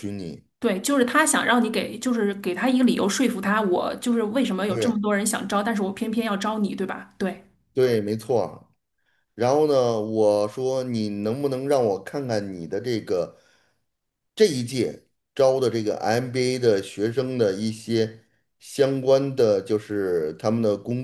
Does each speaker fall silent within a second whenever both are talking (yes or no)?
yes